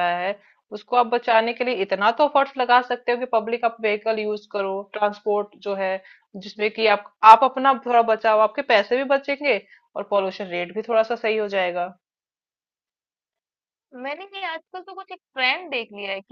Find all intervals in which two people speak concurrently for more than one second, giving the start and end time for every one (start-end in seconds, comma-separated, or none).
none